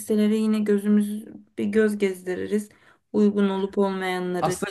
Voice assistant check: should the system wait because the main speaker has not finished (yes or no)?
no